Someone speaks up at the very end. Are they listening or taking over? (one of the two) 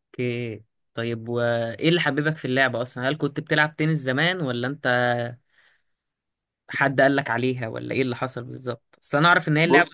listening